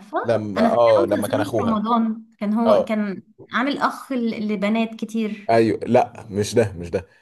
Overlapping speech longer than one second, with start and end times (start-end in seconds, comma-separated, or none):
0.6-1.8